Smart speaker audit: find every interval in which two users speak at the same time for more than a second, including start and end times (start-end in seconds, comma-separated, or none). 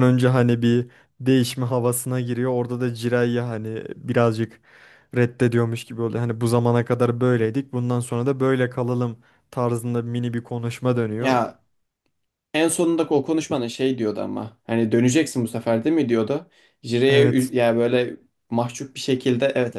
none